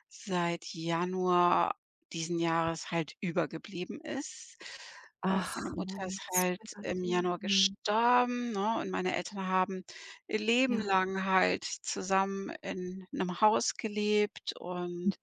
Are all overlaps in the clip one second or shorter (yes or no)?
no